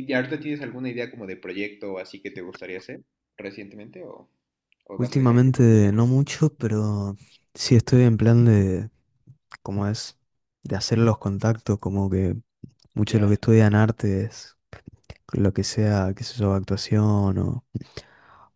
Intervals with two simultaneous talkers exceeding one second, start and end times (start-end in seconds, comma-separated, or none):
5.0-6.2